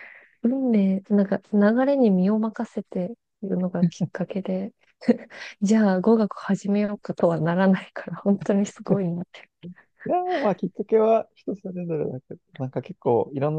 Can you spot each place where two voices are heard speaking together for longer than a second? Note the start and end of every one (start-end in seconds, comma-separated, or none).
none